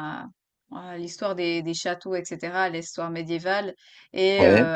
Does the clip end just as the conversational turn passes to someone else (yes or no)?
no